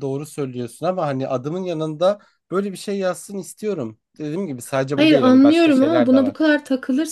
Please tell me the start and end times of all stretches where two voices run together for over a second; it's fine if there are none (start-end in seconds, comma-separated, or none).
5.0-6.4